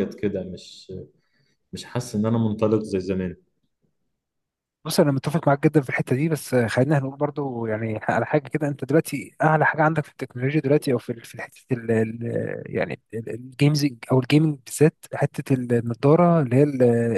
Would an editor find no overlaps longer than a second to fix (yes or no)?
yes